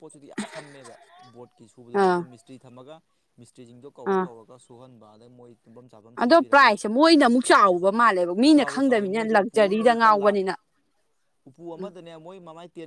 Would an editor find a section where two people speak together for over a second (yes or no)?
yes